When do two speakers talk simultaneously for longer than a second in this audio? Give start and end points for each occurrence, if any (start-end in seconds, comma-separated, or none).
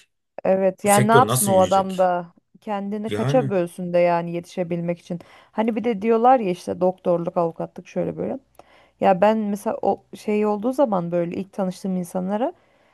0.8-2.1